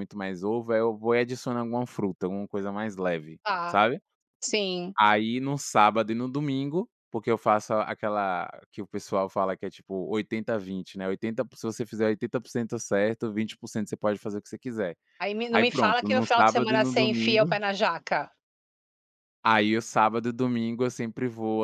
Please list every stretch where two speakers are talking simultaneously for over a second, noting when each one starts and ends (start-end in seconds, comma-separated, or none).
15.5-17.6